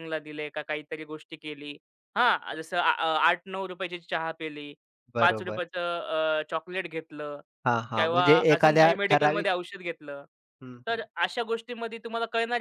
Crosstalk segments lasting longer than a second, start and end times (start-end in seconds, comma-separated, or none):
8.0-9.5